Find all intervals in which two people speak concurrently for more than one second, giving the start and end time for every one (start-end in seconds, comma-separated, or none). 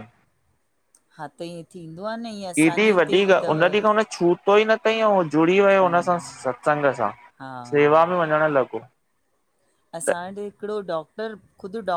none